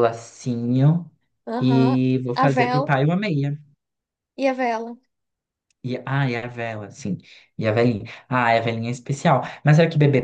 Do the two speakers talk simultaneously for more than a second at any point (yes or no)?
yes